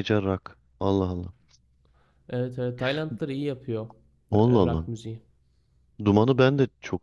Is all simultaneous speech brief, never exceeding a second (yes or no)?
yes